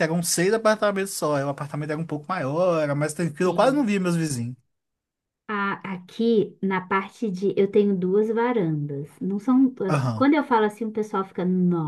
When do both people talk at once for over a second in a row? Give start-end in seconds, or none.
none